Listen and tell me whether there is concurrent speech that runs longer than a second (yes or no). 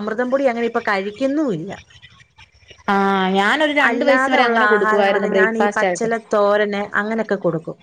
yes